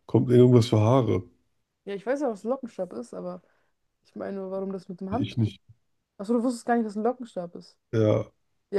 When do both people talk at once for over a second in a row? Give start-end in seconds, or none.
none